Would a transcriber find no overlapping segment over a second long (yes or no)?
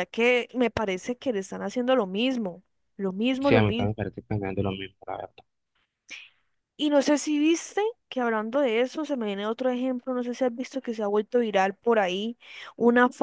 yes